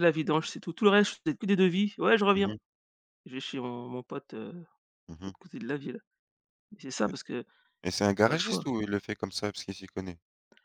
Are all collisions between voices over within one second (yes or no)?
yes